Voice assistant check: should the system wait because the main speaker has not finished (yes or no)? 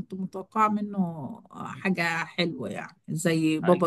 no